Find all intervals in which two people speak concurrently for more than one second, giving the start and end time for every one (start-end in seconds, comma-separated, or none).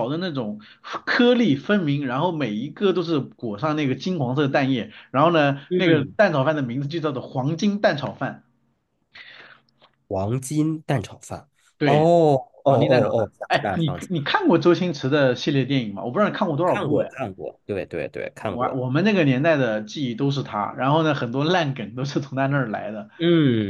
12.7-14.4